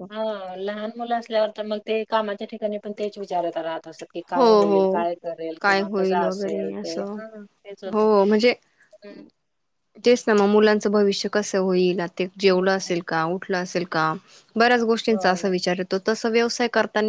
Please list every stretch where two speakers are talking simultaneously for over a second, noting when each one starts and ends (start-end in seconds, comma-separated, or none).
5.6-7.2